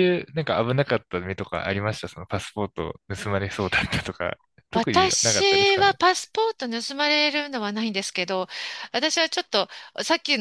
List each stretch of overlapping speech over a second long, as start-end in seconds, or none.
4.7-6.0